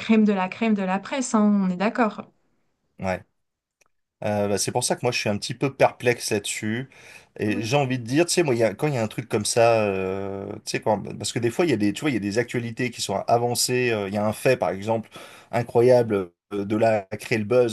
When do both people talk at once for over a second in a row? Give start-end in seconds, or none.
none